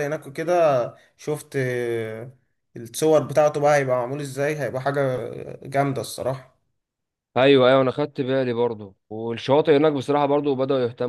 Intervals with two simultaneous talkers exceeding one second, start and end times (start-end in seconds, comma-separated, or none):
none